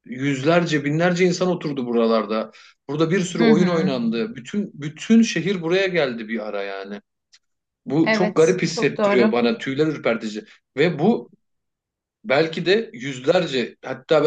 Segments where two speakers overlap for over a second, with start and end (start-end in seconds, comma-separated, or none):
8.0-9.3